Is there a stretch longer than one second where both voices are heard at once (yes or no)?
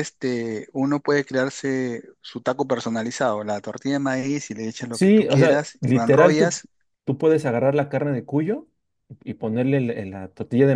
yes